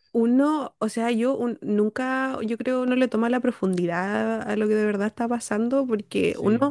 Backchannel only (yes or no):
yes